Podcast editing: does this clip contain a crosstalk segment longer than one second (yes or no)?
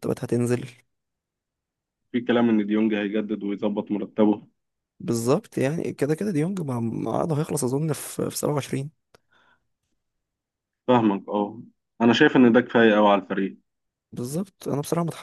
no